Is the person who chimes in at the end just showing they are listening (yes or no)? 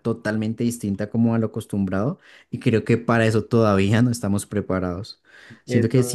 yes